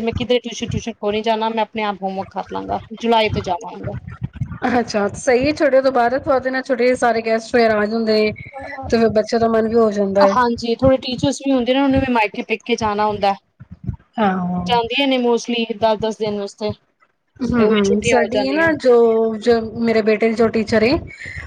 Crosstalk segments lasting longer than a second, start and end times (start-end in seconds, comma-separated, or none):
17.4-18.7